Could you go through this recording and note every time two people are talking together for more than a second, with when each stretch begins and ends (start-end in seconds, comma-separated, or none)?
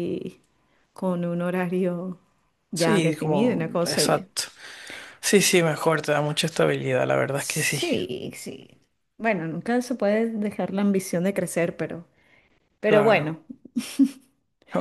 2.7-4.3